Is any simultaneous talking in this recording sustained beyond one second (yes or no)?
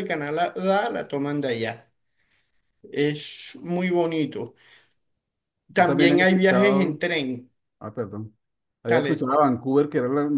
yes